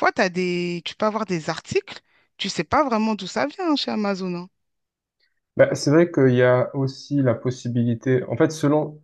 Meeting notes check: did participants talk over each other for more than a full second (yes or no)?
no